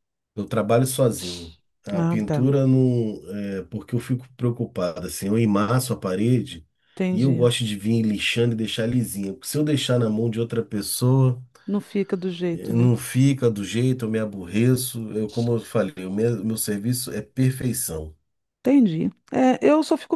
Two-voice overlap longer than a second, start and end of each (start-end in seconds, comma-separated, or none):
none